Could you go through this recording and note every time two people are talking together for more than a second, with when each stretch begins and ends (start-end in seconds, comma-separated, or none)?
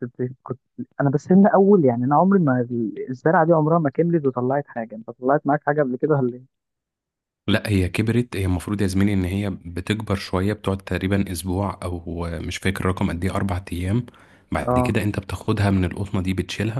none